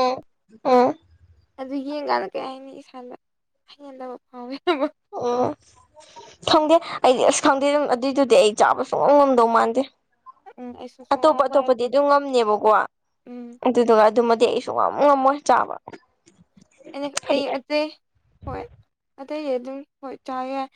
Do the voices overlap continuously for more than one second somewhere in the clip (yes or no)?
no